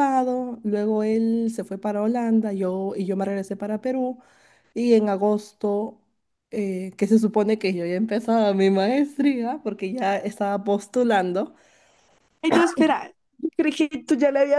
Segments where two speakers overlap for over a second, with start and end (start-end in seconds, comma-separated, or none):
none